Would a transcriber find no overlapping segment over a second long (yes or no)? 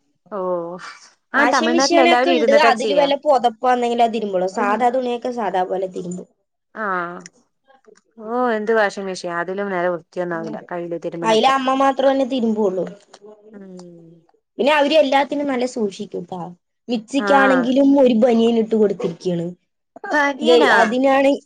no